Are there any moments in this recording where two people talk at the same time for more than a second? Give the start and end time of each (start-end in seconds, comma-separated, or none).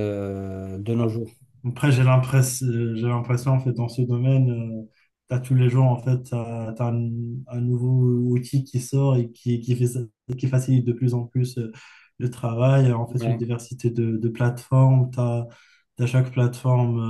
none